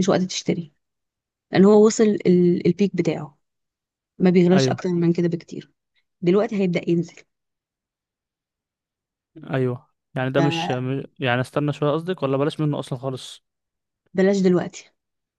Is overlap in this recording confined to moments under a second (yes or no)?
yes